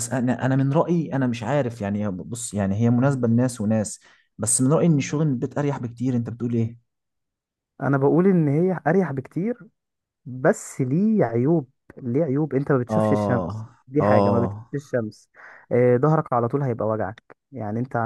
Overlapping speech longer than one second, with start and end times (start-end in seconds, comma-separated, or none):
12.9-14.7